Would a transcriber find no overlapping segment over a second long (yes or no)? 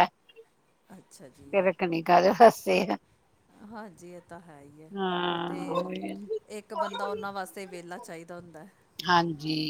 yes